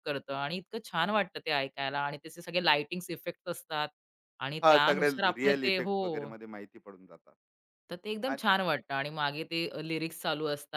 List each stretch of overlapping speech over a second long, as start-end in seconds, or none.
4.6-6.3